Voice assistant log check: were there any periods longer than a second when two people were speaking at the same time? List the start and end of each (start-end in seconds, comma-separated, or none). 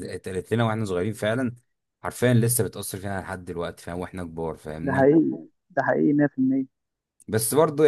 none